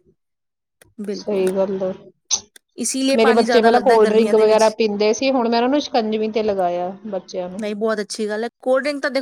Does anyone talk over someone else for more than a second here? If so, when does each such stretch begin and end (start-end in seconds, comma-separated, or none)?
3.1-4.6